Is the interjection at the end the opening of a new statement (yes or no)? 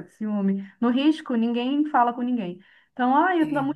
no